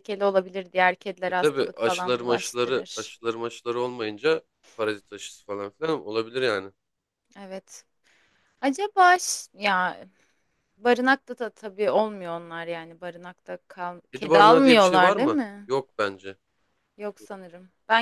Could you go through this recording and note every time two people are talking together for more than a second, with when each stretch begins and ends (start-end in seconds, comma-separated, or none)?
1.3-3.1, 14.1-15.7